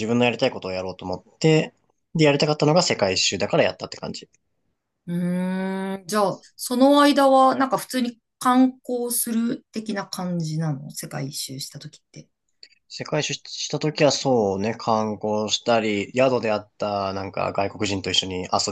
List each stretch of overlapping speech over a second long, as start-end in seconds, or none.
none